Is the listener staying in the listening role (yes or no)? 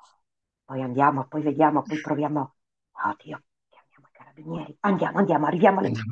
no